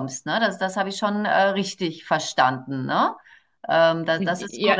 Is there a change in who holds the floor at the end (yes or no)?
yes